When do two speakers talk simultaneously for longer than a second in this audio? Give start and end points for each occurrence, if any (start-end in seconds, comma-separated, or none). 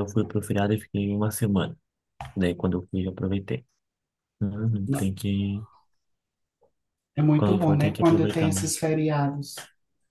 7.4-8.7